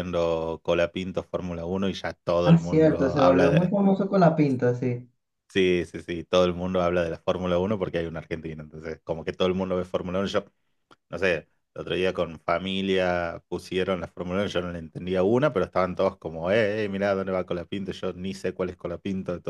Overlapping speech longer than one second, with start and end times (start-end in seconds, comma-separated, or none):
2.4-3.7